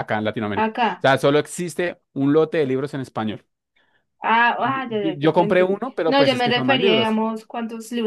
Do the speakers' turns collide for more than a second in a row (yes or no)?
yes